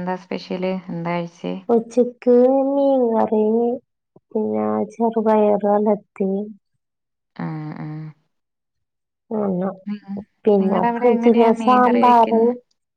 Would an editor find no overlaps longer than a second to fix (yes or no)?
no